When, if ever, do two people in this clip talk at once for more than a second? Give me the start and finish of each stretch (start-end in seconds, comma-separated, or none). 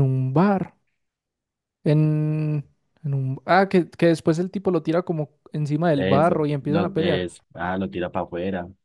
5.9-7.3